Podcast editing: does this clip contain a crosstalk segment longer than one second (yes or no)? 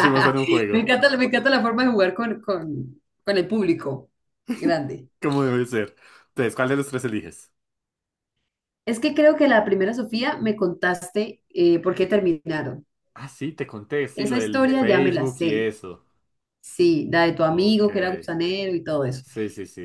yes